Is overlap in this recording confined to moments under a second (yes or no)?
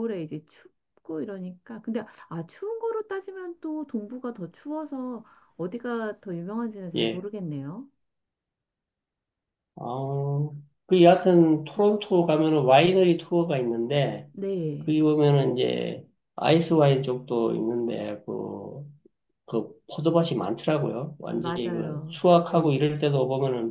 no